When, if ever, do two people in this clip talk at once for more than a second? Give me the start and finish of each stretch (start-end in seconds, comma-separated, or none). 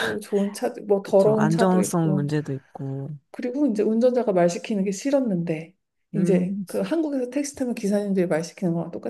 1.0-2.3